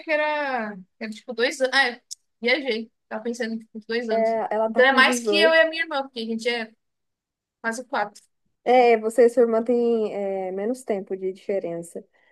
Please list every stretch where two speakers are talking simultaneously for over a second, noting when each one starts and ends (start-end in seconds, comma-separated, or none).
4.1-5.6